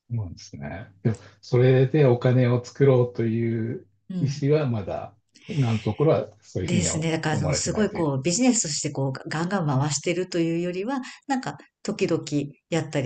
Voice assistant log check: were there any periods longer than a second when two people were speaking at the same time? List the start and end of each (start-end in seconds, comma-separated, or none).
6.6-8.1